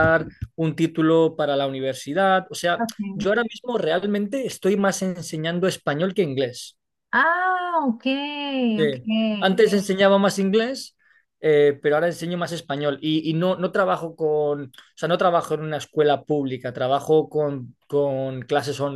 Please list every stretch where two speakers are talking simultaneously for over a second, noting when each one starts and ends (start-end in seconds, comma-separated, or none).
none